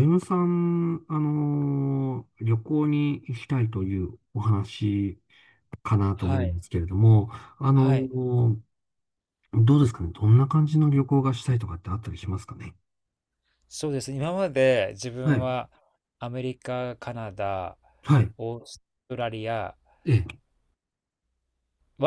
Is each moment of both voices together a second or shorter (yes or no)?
yes